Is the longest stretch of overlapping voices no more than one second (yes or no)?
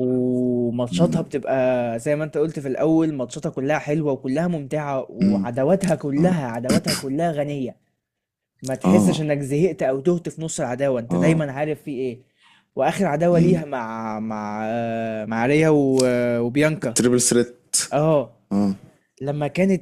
yes